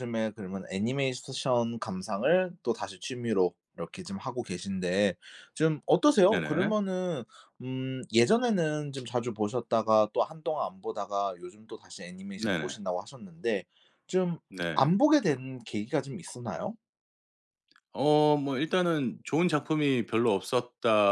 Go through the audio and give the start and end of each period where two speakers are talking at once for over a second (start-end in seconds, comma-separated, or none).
none